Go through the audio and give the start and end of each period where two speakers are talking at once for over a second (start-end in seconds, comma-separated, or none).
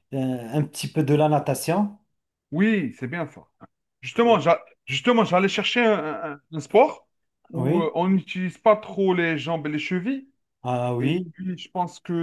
none